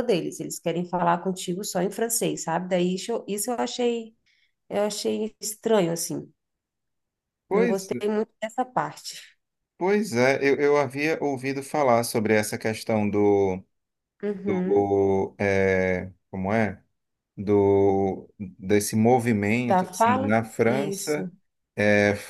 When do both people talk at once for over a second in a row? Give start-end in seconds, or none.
19.6-21.3